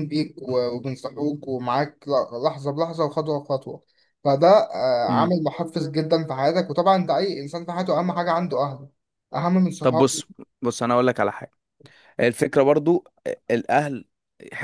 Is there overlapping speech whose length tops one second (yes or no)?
no